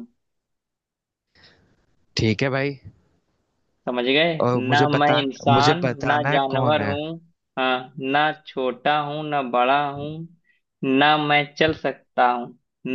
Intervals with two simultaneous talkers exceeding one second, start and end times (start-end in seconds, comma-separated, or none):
4.7-6.9